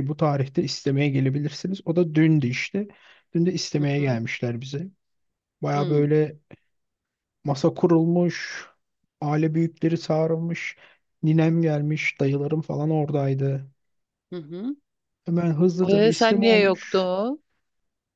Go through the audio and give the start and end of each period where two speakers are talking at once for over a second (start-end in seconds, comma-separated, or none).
15.9-17.1